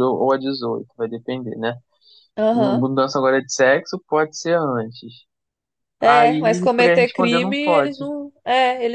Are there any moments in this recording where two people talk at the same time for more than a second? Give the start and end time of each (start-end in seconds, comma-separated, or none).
6.0-8.1